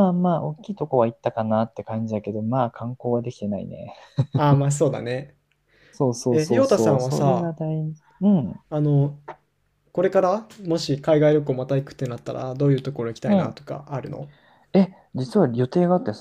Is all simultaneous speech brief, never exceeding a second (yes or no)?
no